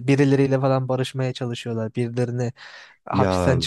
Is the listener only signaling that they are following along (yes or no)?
yes